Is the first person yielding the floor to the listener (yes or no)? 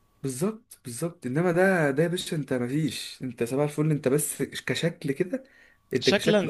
yes